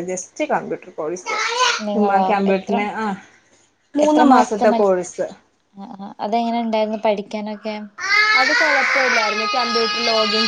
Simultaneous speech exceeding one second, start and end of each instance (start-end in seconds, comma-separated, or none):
none